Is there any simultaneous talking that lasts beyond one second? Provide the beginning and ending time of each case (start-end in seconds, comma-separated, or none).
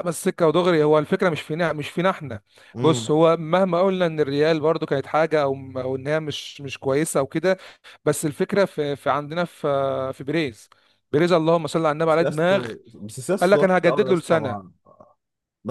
13.4-14.7